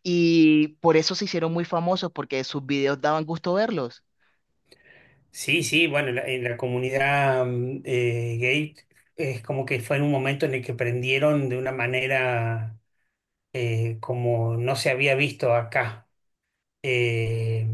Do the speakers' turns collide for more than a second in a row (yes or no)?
no